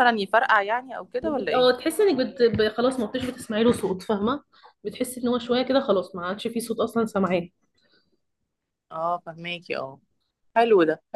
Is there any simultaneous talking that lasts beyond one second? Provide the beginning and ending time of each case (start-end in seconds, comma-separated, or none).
none